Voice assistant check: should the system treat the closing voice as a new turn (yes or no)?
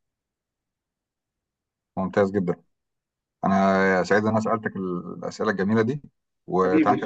yes